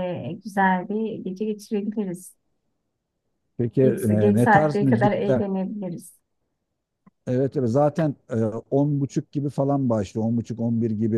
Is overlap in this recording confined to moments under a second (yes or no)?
no